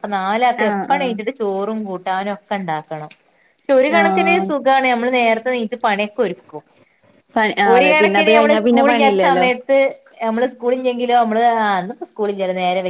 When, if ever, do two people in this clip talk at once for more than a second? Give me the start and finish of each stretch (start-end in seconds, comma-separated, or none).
7.7-9.4